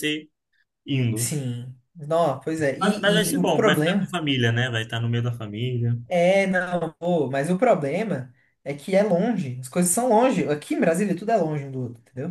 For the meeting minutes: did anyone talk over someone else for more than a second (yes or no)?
yes